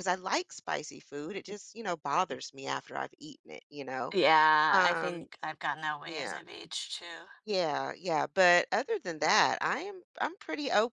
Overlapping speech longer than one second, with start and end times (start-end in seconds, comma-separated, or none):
none